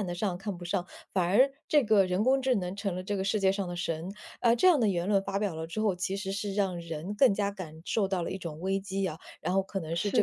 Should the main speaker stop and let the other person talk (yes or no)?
no